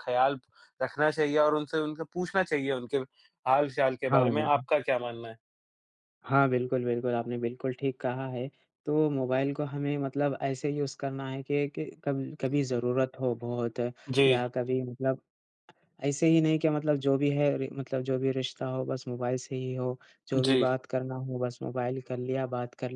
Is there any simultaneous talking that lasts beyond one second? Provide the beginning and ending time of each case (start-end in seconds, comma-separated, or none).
none